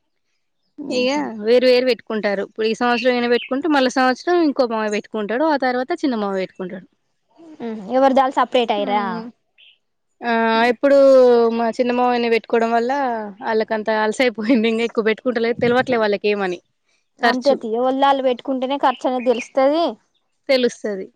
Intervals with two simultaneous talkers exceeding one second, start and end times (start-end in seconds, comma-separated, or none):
none